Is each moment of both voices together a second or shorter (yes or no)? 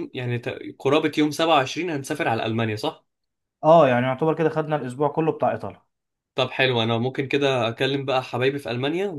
yes